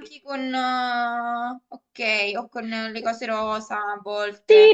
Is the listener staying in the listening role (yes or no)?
no